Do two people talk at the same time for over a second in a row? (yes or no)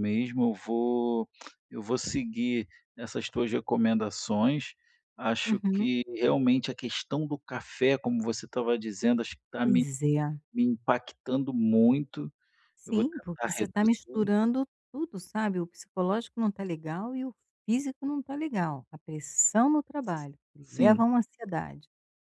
yes